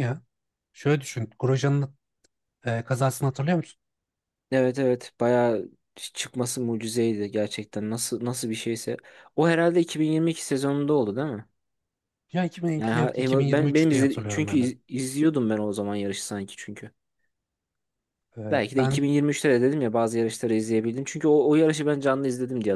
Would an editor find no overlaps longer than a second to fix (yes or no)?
no